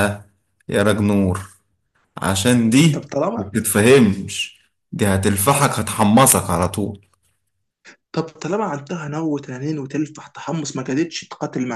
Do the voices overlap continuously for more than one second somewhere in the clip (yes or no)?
no